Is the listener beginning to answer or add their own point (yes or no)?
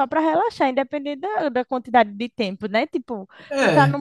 no